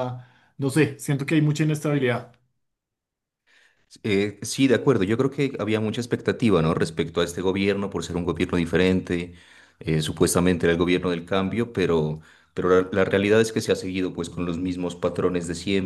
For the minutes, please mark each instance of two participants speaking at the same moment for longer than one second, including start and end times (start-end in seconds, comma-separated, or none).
none